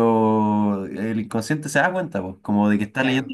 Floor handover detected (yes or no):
no